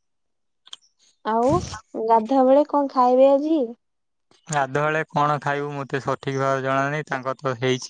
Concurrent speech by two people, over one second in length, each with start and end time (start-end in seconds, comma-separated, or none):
none